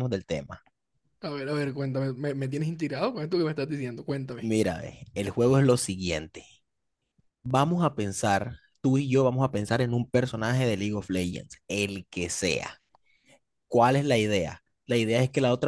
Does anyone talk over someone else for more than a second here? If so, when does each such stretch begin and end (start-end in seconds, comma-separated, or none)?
none